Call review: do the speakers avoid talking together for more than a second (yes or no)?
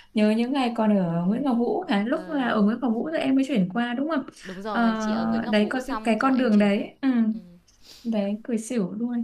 no